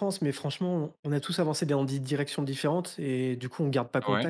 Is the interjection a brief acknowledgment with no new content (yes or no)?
yes